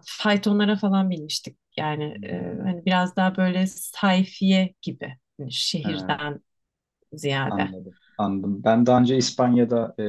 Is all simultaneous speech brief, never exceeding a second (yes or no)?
yes